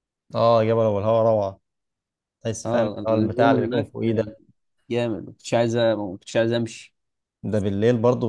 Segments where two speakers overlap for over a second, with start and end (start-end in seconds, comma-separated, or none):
2.6-3.9